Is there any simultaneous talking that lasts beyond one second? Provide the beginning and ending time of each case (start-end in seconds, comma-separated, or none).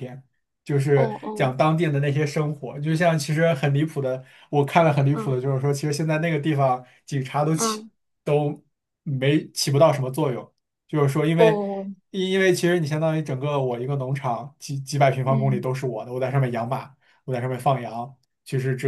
none